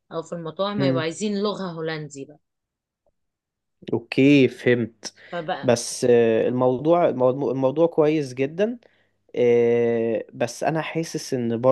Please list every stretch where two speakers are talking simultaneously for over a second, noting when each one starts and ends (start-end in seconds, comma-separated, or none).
none